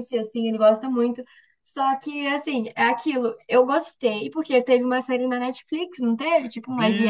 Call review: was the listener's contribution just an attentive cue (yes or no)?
no